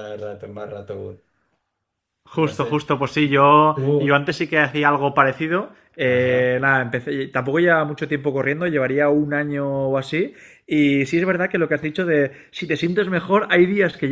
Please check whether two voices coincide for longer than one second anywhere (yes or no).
no